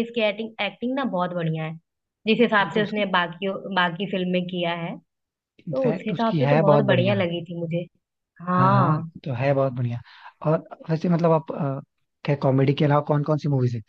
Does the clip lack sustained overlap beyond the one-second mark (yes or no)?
no